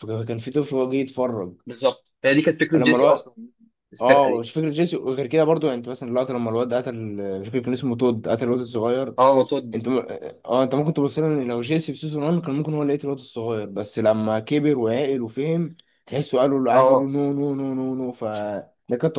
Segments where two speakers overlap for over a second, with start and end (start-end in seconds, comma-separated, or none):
none